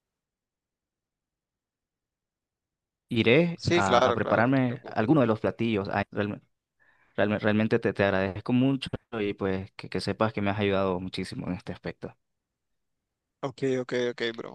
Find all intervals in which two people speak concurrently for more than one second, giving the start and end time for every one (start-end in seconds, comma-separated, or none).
3.8-5.2